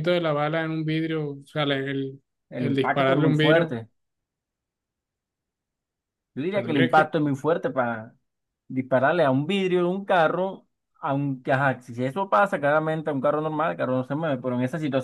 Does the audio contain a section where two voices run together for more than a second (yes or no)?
yes